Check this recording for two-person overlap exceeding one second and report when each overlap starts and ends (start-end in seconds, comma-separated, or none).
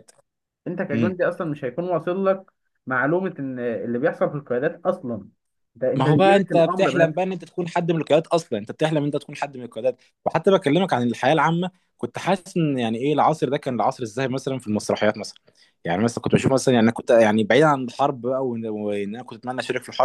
6.0-7.2